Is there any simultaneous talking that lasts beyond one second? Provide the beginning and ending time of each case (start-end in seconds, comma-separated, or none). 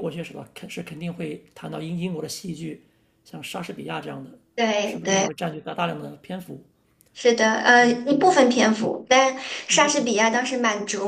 none